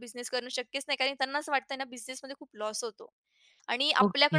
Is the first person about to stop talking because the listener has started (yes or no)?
no